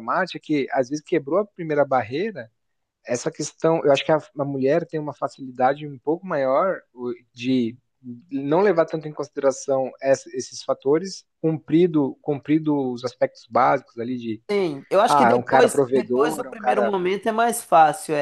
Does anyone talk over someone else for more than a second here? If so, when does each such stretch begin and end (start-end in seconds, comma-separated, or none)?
15.1-16.9